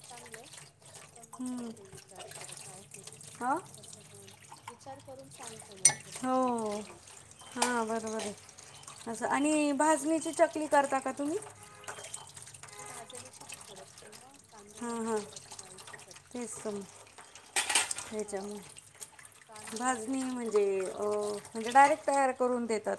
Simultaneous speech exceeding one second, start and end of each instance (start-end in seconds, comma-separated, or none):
19.8-21.2